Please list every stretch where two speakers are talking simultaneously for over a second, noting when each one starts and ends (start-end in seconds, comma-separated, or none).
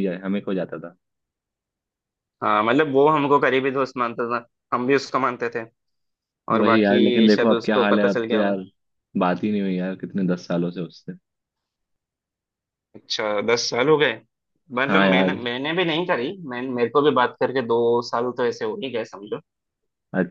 6.5-8.5